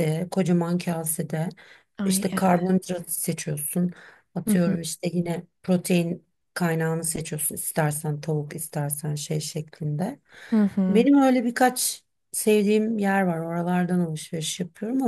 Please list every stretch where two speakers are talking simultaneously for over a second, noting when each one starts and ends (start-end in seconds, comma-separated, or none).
none